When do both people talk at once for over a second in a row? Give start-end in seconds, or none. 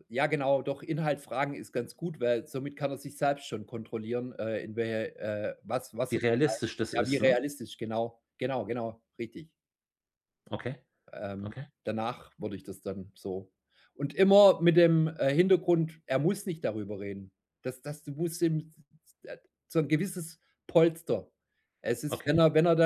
6.1-7.4